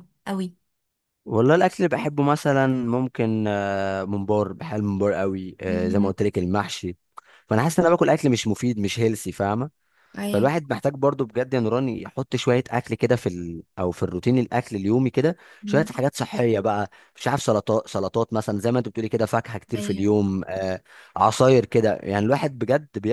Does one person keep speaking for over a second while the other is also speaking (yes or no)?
no